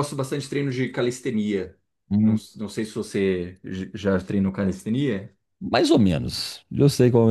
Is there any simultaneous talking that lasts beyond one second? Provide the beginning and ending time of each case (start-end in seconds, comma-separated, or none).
none